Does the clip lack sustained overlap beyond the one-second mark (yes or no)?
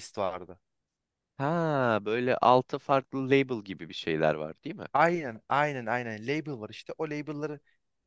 yes